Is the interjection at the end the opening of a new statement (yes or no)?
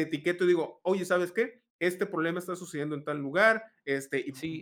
yes